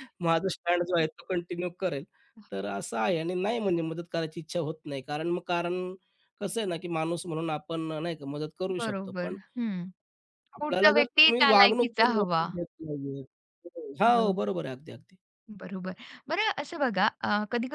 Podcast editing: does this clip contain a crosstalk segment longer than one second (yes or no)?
yes